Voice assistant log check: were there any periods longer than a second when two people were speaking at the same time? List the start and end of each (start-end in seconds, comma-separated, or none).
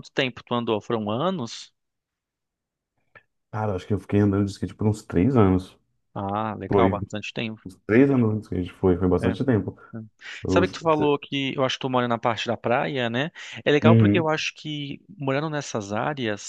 none